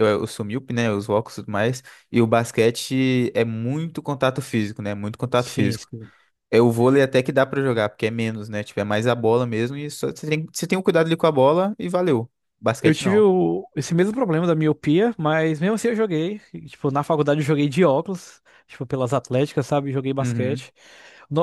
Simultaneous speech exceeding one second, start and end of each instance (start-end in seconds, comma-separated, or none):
none